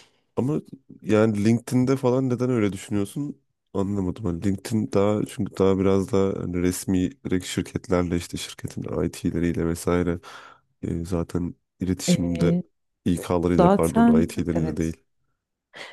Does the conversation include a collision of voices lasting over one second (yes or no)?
yes